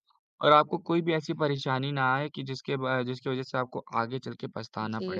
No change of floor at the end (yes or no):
no